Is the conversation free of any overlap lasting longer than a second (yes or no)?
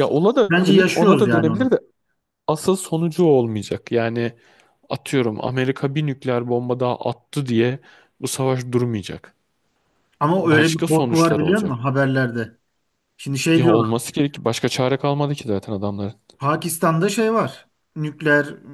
no